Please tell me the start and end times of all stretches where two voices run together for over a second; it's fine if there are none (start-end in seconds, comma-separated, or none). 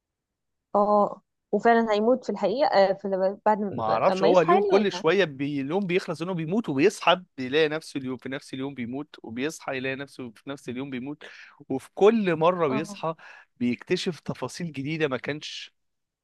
3.7-5.0